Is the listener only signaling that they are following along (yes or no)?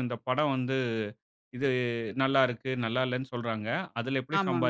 yes